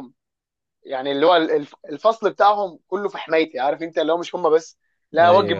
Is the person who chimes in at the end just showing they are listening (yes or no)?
yes